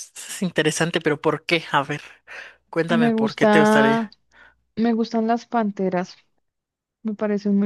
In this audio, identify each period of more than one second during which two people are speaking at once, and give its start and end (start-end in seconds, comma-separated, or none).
2.9-4.1